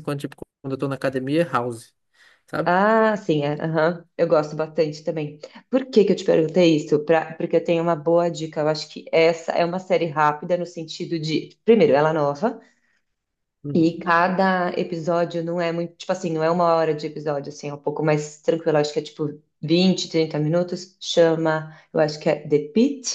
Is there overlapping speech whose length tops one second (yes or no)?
no